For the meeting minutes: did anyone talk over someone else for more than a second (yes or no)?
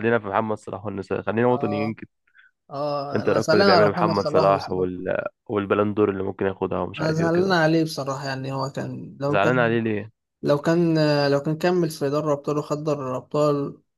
yes